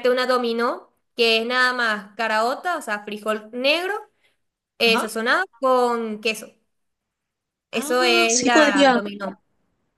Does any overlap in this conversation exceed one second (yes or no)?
yes